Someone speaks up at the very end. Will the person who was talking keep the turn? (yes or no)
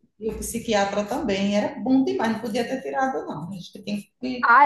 no